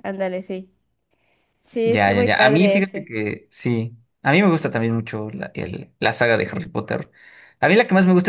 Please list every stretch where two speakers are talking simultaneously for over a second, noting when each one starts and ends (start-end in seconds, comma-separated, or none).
1.8-3.1